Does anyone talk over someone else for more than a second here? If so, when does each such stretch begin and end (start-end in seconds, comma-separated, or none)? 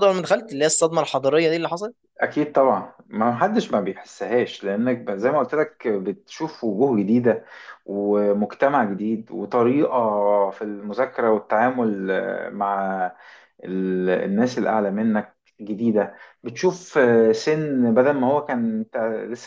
none